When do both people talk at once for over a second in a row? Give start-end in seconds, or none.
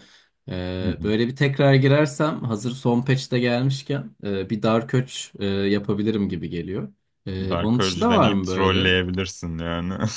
7.5-8.9